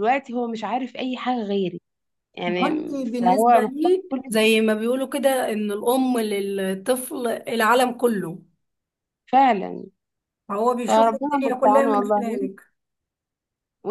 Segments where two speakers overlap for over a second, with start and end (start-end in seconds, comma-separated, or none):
2.5-4.2, 10.9-12.4